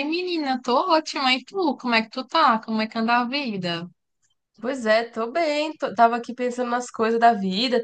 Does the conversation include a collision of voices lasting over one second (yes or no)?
no